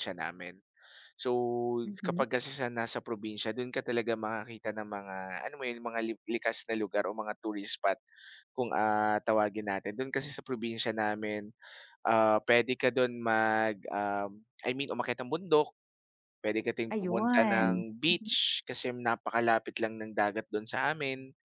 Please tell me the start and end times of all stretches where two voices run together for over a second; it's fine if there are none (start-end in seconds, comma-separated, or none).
16.9-18.4